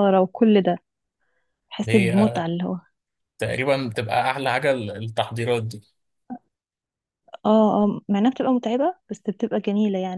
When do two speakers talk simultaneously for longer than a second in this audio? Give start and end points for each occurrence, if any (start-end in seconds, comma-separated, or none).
none